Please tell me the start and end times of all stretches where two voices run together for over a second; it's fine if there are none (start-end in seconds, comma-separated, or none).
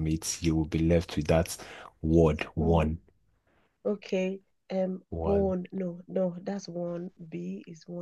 none